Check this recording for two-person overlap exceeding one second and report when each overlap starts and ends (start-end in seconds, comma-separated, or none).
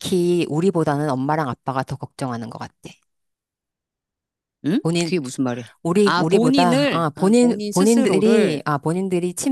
6.0-8.6